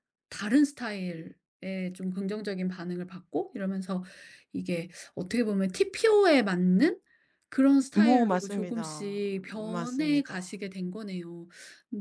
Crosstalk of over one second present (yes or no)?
yes